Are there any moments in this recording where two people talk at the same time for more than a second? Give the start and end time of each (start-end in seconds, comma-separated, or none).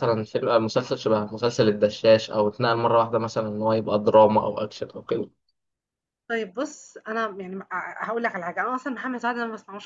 none